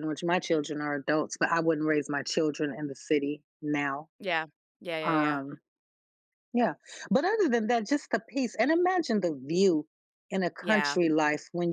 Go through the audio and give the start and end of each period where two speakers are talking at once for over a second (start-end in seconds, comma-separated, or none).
none